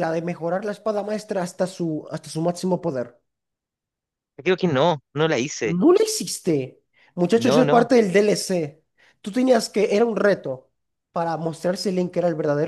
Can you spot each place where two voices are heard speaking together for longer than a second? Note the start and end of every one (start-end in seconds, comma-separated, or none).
none